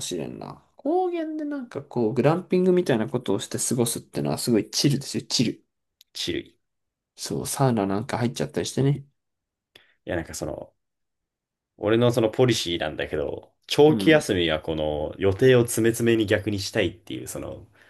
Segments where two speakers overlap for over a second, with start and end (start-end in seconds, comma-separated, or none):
none